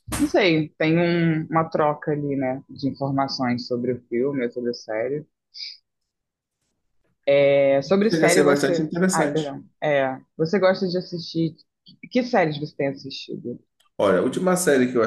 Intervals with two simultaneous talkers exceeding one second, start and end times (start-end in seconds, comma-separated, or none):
8.1-9.6